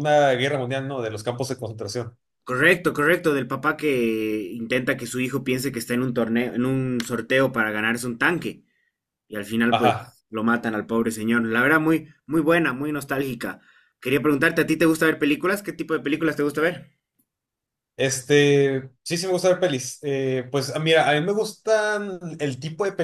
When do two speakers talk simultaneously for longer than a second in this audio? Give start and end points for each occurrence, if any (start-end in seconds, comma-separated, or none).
none